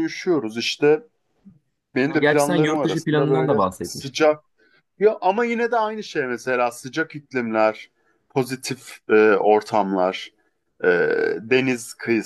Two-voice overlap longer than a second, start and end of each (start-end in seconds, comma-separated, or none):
2.1-4.3